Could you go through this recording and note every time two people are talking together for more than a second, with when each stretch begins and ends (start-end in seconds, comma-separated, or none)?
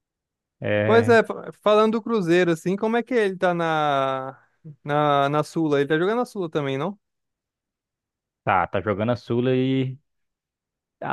none